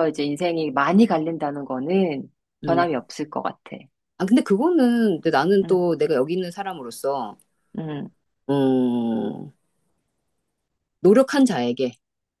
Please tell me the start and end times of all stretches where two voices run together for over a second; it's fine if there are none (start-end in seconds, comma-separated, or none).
none